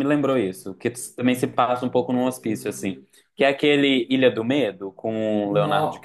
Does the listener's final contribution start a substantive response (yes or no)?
yes